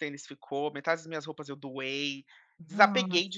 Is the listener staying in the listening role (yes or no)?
yes